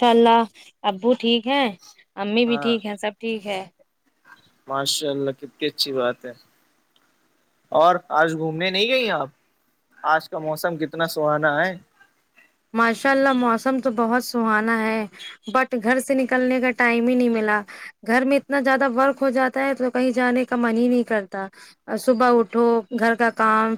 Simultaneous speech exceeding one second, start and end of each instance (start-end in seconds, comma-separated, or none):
none